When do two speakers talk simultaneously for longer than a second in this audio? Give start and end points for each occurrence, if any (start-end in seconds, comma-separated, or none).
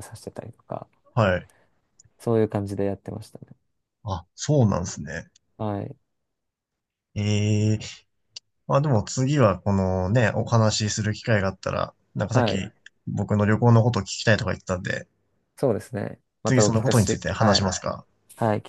16.4-17.7